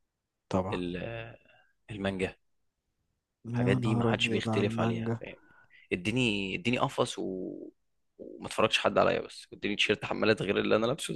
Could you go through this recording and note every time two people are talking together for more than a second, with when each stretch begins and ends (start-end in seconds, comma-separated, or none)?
3.5-5.2